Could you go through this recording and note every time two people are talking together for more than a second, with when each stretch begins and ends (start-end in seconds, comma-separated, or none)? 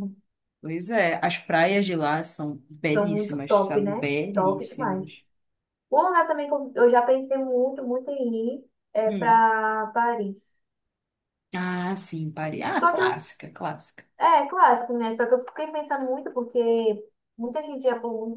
2.9-5.2